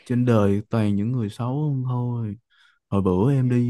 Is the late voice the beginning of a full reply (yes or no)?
no